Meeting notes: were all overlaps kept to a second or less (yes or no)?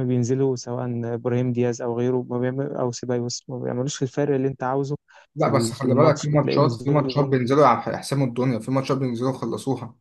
no